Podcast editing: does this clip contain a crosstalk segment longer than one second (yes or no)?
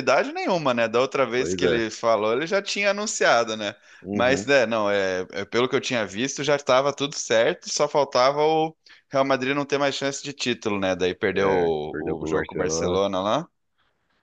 yes